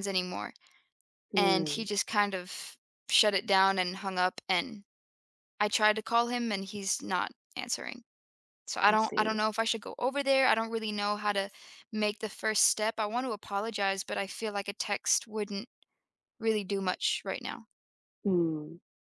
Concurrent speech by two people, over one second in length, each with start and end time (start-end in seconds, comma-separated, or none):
none